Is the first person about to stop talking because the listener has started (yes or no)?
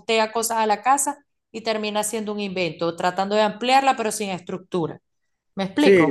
yes